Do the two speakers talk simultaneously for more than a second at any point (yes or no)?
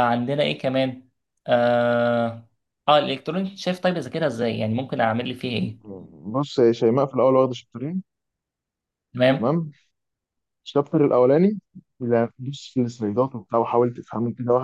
no